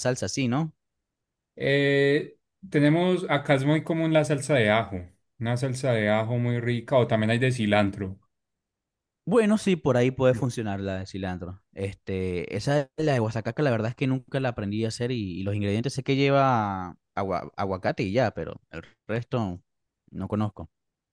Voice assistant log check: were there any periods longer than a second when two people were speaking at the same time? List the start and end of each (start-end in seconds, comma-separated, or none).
none